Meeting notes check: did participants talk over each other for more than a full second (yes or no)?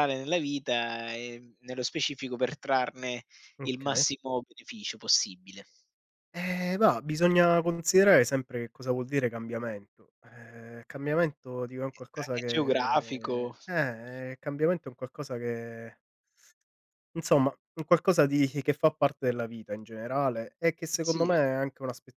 yes